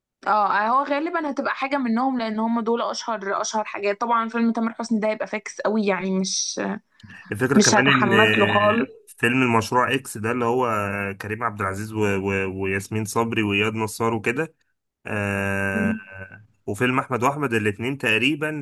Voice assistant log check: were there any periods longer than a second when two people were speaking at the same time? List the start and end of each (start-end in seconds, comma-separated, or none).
7.5-8.9